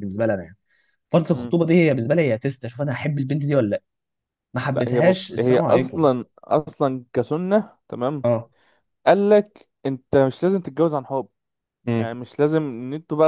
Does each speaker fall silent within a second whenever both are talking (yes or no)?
no